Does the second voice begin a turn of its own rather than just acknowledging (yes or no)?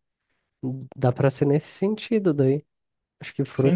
yes